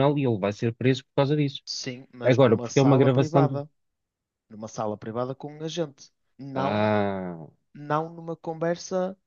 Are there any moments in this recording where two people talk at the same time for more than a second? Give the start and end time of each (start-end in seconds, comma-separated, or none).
2.2-3.6